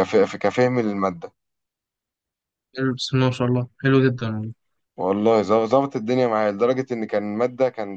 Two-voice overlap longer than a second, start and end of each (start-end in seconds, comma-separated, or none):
none